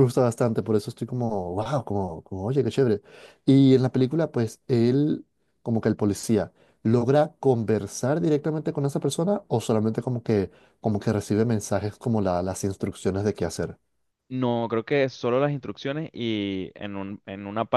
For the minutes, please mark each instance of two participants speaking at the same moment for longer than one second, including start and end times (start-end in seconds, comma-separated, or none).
none